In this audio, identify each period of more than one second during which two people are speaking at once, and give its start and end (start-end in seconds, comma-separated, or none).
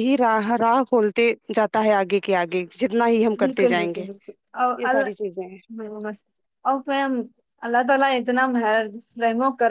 none